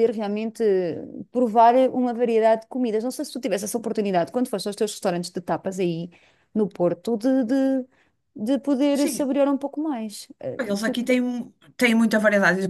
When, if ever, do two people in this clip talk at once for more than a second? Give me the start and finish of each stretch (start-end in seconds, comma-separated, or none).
none